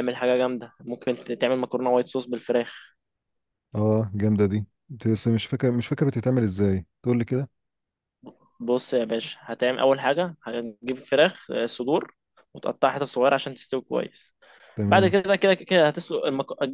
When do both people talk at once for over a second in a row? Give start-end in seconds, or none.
none